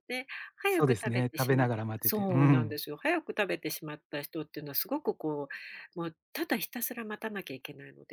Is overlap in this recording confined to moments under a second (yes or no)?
no